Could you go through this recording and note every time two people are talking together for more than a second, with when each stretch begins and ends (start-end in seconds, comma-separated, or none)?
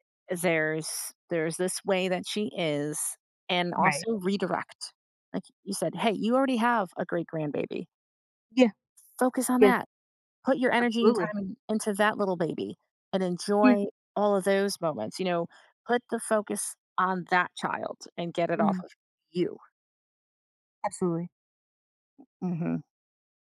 none